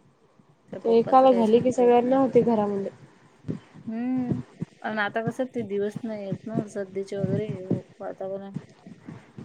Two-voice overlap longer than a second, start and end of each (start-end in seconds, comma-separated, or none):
1.0-2.2